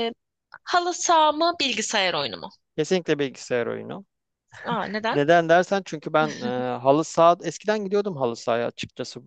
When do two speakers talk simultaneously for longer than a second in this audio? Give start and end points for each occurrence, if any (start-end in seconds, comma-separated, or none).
none